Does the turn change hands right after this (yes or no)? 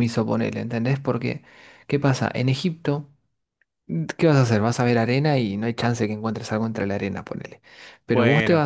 no